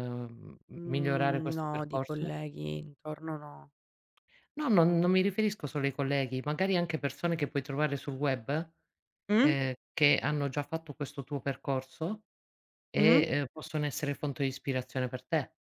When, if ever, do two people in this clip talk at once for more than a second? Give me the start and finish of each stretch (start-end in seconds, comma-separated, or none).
0.8-2.3